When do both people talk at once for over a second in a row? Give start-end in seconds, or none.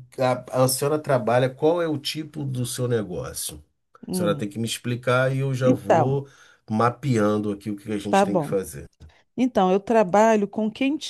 none